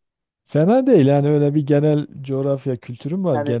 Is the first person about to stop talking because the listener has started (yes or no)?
yes